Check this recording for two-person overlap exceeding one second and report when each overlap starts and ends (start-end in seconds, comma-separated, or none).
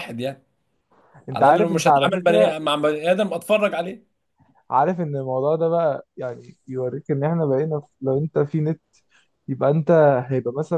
1.3-2.5